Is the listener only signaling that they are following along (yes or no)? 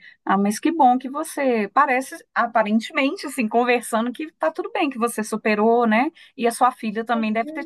yes